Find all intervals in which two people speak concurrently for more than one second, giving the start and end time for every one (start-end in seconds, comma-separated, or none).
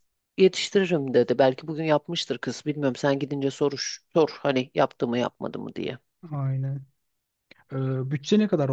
none